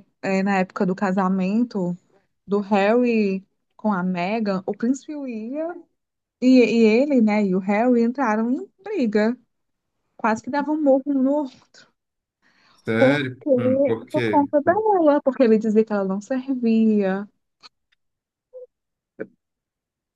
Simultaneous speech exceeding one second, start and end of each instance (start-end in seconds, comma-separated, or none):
13.0-14.4